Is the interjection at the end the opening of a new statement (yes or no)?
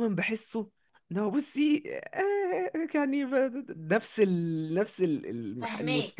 yes